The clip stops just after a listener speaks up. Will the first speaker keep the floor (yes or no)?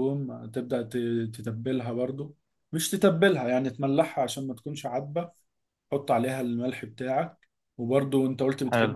yes